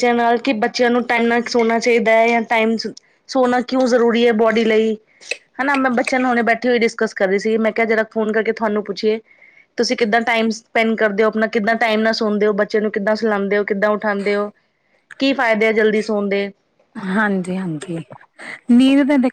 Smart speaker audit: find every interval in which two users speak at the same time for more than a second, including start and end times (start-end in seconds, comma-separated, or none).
none